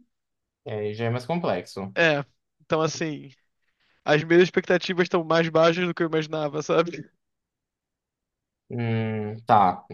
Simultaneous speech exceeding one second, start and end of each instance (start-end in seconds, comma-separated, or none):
none